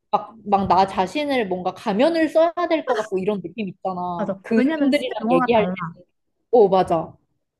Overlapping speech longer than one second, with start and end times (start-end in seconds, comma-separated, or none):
4.2-5.8